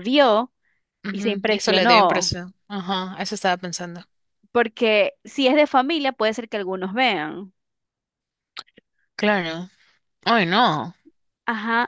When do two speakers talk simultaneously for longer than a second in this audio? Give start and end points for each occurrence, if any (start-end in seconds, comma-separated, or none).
1.1-2.3